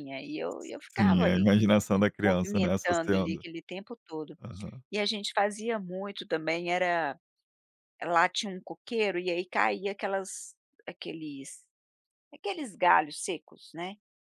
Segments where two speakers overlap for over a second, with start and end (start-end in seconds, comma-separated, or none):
2.2-3.4